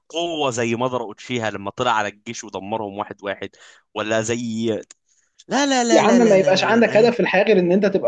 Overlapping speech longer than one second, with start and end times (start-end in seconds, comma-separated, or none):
5.9-7.1